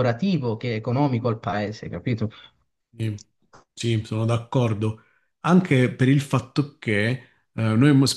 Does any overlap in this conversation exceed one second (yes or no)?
no